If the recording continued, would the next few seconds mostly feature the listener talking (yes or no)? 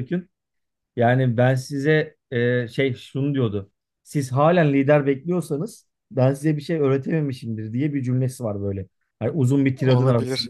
no